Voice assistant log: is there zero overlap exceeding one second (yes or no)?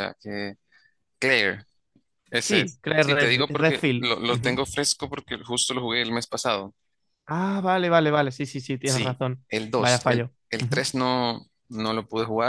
no